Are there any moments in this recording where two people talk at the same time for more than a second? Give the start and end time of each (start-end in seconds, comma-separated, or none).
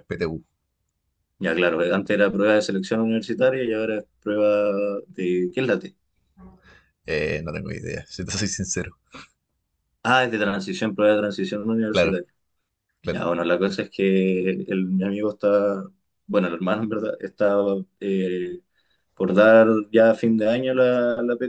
none